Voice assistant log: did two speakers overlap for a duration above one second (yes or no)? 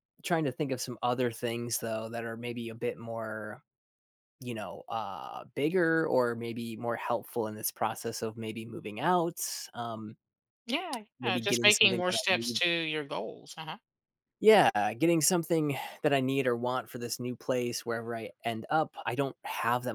yes